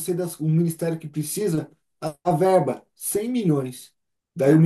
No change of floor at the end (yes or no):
yes